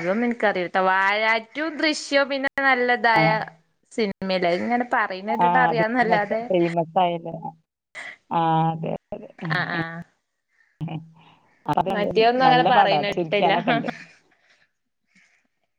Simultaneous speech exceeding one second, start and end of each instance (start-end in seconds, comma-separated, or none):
11.9-13.5